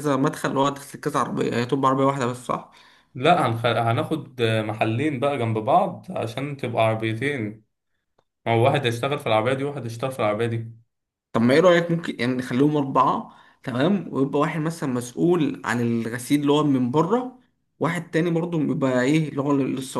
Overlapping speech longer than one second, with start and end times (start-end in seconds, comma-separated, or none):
none